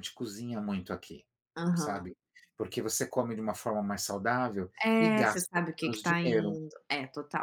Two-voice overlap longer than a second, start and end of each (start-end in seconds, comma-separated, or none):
4.8-6.6